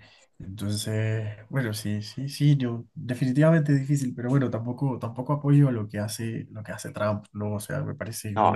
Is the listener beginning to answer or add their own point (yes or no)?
yes